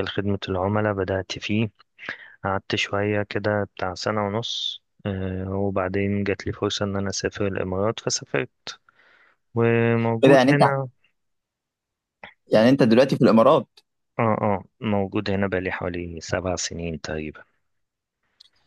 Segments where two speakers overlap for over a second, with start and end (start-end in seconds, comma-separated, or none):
none